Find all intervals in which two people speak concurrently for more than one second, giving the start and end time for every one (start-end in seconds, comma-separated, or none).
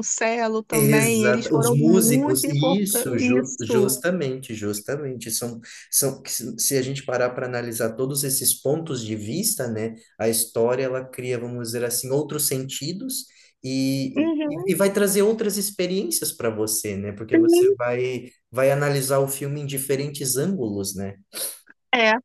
0.7-3.9